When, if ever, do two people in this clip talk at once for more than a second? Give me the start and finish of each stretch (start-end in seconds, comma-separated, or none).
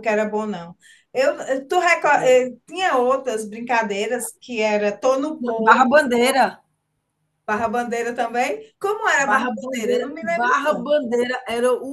9.2-10.9